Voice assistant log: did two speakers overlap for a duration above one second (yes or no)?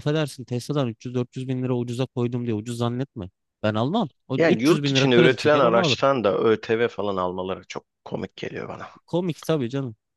yes